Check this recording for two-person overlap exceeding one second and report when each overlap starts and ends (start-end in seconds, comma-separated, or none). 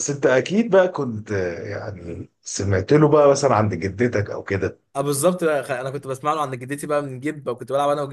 none